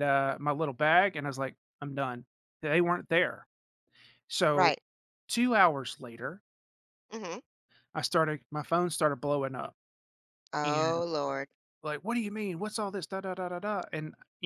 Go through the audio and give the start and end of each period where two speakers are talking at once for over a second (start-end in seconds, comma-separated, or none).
none